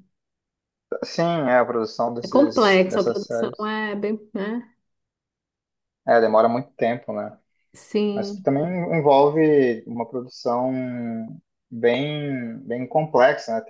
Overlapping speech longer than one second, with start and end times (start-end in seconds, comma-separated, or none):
2.2-3.6